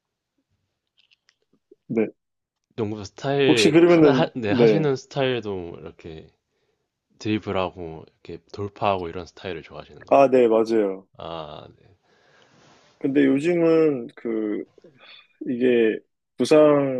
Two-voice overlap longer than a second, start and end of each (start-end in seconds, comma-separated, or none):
3.5-4.9